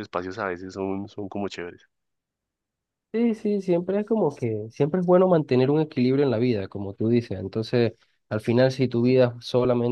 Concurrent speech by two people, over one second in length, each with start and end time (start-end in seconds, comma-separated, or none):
none